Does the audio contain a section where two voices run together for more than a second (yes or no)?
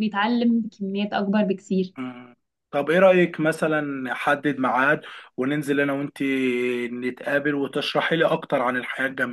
no